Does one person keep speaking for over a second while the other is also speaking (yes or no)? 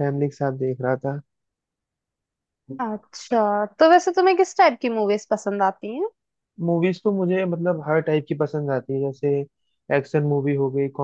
no